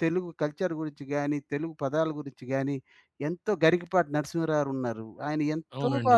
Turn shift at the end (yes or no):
yes